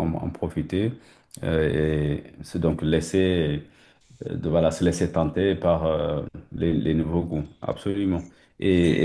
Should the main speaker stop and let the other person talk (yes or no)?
no